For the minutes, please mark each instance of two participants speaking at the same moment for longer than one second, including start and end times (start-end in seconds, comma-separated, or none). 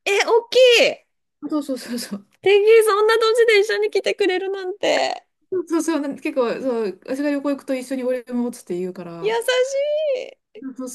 none